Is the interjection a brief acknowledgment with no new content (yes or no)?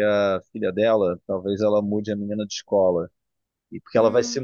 yes